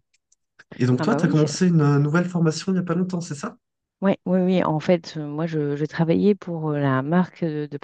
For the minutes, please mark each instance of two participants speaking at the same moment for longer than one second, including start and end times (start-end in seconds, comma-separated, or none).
none